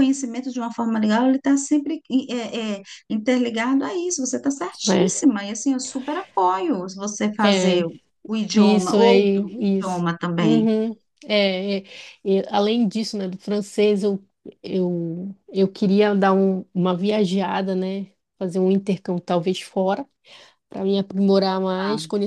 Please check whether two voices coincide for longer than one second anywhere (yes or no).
yes